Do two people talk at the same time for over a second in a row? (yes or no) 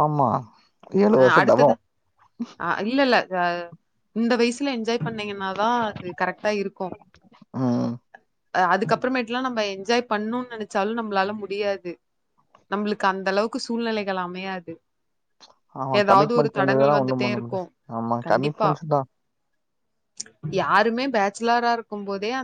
yes